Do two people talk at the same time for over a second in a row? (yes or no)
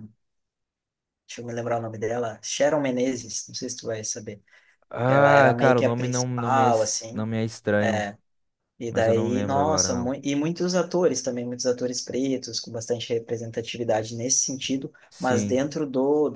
yes